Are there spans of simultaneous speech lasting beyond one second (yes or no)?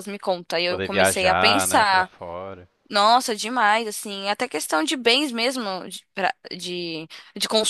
yes